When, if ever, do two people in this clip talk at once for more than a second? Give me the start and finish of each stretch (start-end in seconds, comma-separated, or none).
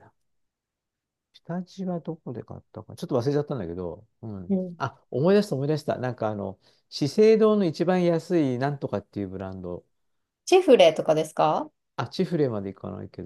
none